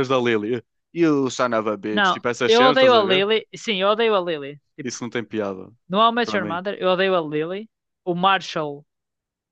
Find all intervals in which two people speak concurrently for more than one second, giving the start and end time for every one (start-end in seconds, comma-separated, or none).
1.9-3.3